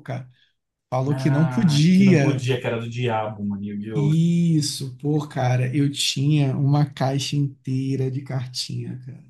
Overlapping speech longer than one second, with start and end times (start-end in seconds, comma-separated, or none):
1.1-2.5